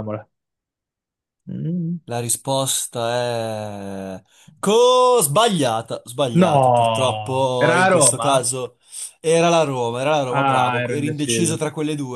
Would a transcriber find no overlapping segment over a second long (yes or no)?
no